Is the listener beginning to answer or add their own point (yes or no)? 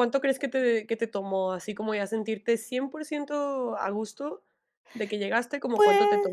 yes